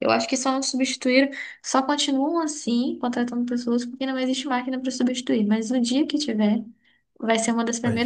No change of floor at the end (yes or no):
yes